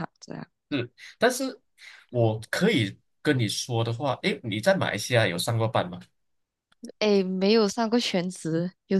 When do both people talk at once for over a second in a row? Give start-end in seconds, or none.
none